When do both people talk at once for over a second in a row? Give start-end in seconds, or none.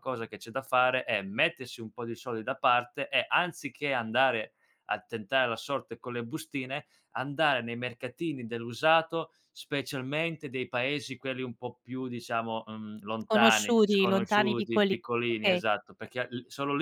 13.2-15.6